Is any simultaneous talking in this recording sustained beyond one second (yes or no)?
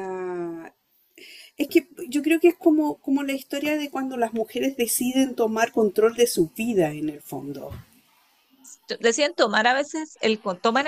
no